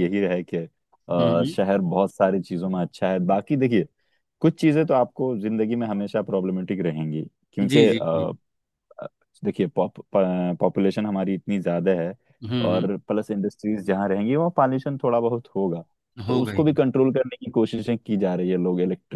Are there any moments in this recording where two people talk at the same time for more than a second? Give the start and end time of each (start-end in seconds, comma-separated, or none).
none